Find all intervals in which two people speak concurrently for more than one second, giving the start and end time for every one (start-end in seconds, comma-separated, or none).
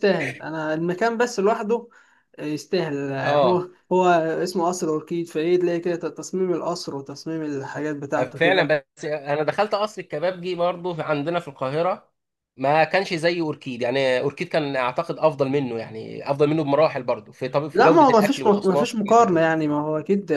17.7-19.4